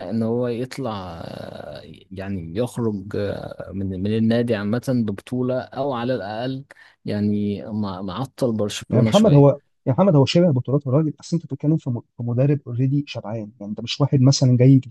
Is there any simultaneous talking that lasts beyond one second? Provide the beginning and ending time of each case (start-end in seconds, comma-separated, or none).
none